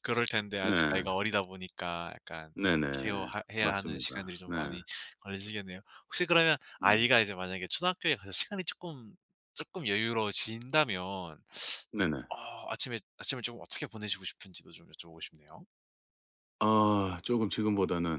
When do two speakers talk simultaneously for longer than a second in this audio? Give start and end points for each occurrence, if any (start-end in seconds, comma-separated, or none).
2.9-4.5